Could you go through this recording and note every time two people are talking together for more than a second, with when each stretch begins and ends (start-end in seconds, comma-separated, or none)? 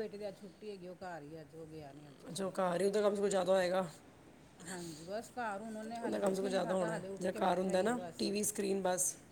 6.0-8.2